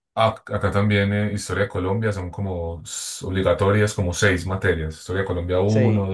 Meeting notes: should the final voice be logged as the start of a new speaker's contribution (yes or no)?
no